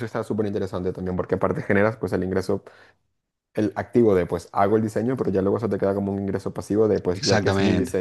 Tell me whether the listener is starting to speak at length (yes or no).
yes